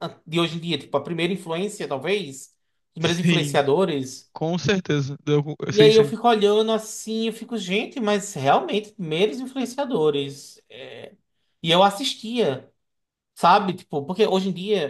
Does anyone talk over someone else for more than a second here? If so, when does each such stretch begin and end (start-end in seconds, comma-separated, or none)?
none